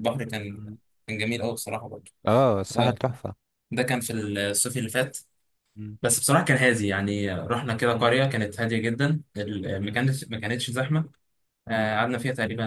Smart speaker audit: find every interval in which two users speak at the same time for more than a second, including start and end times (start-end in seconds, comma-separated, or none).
none